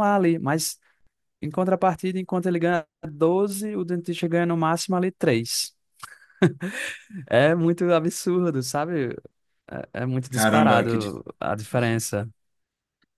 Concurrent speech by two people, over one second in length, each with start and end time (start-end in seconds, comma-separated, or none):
10.3-12.0